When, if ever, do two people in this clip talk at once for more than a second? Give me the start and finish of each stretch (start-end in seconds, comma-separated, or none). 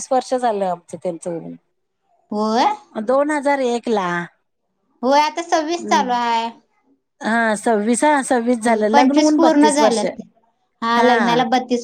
8.6-10.0